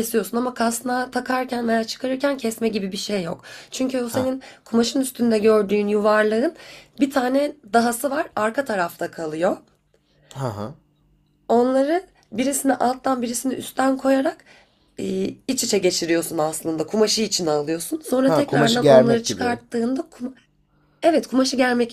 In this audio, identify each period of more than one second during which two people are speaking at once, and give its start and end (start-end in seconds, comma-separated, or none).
18.2-19.6